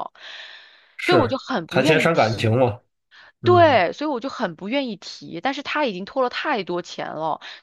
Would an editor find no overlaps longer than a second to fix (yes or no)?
no